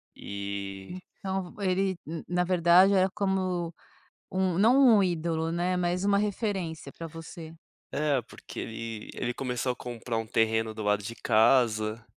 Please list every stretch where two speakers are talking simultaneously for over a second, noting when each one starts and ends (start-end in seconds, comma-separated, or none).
none